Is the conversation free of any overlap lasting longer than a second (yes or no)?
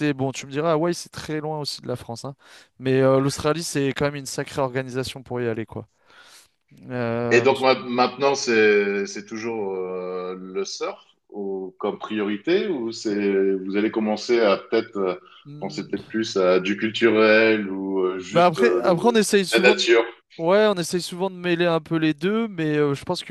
no